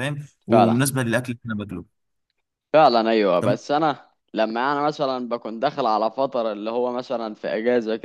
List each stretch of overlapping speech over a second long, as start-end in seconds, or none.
none